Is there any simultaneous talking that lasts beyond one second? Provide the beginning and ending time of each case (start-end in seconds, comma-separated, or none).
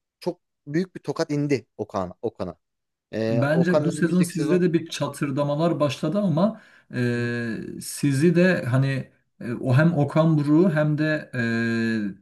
3.3-4.6